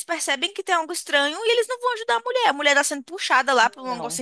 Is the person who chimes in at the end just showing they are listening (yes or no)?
yes